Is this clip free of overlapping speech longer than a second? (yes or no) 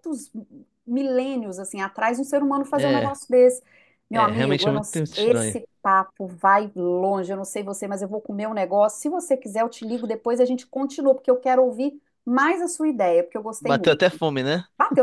no